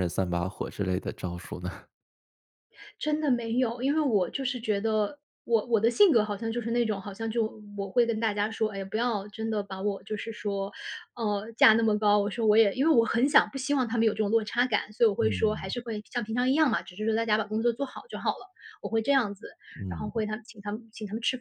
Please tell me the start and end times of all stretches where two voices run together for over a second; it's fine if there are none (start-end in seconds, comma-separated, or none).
none